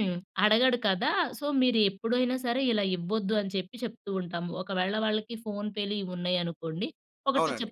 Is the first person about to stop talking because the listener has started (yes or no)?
no